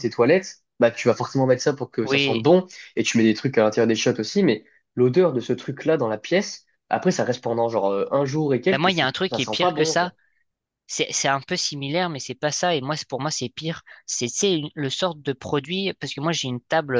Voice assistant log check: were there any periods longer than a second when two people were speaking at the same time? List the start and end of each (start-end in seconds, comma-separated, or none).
8.7-10.1